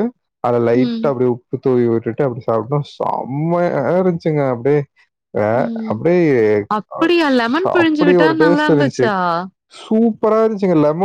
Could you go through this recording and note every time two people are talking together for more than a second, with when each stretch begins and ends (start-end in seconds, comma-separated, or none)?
7.0-9.1